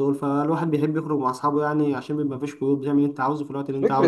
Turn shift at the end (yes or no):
yes